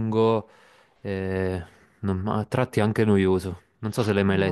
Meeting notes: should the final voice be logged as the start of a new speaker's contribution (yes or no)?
yes